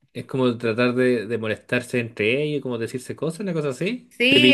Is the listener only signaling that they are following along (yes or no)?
no